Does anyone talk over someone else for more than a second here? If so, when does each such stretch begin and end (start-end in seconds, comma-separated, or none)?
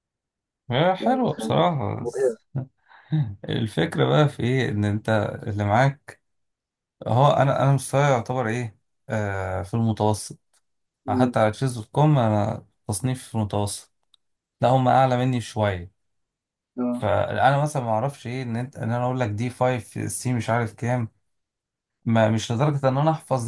1.0-2.4